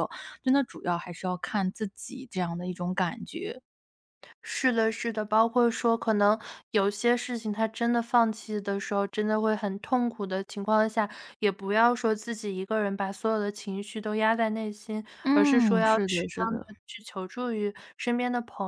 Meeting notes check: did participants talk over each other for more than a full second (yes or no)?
yes